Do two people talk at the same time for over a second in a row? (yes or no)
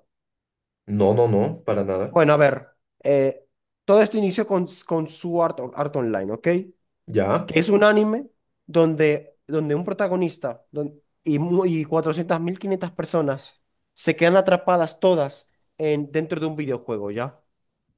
no